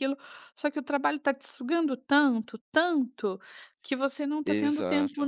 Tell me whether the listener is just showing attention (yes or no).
yes